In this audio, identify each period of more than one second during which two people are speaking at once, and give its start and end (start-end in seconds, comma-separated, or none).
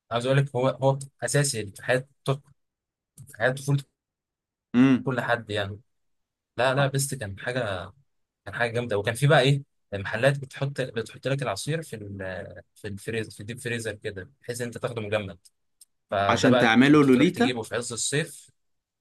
16.3-17.6